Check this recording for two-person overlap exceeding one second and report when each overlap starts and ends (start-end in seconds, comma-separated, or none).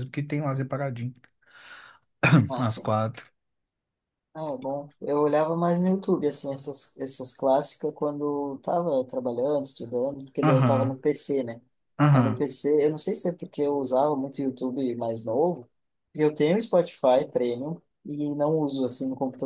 none